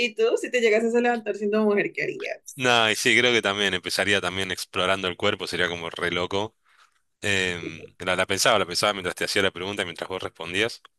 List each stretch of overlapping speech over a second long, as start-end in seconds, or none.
none